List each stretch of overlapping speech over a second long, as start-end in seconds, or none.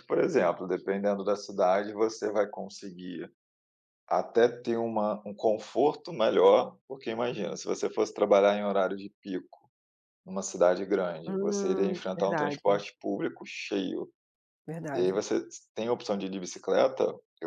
11.2-12.8